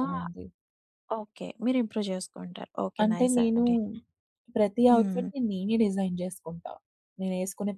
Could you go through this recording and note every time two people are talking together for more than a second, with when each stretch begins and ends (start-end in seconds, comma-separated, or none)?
none